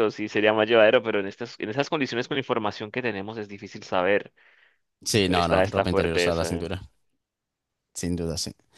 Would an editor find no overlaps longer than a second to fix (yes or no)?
no